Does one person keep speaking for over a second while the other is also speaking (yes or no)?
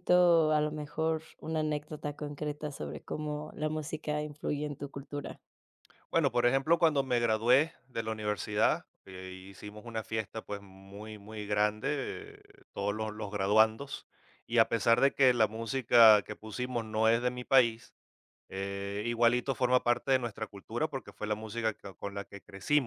no